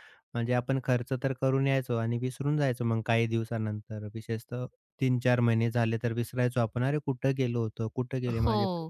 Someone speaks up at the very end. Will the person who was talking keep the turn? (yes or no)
no